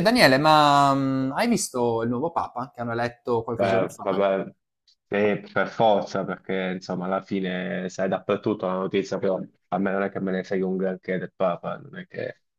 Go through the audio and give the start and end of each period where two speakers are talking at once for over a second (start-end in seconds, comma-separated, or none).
none